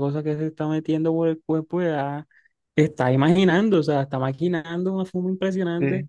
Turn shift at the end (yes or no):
no